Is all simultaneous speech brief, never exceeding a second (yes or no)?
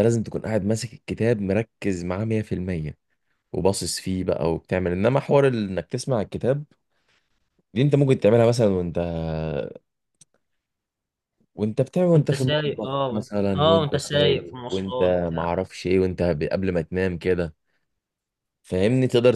no